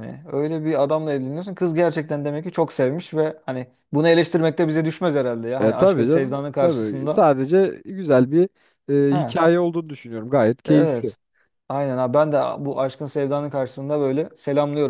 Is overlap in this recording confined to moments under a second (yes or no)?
no